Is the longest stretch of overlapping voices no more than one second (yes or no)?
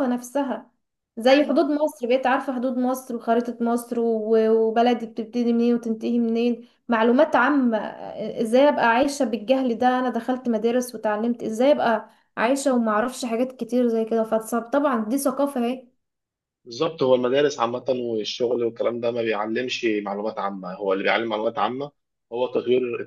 yes